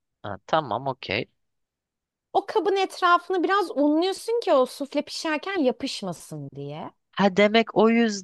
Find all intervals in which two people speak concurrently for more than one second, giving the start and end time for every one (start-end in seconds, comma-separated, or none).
none